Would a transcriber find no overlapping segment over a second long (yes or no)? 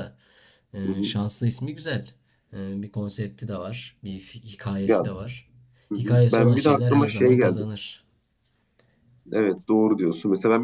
no